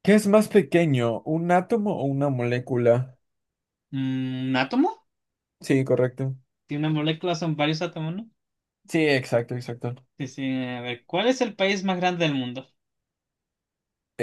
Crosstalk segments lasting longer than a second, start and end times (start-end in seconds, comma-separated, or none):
none